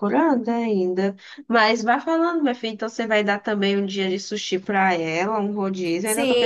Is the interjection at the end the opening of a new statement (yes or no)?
yes